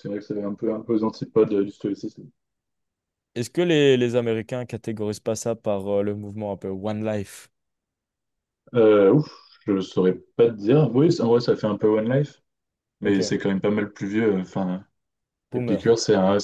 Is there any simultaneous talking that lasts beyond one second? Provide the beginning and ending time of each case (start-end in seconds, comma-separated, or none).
none